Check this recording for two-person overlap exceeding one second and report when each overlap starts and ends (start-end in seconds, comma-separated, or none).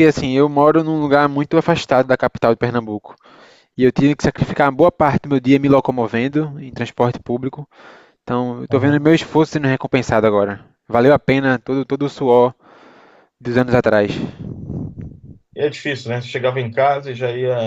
none